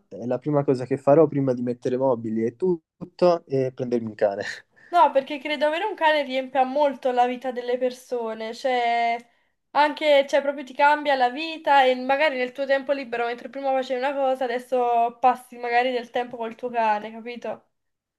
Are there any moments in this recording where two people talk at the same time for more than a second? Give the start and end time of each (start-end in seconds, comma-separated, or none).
none